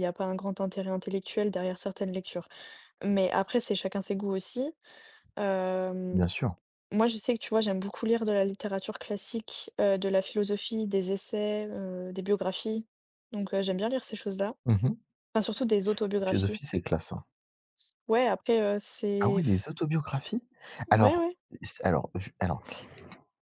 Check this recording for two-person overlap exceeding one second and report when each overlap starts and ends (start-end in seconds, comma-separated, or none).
none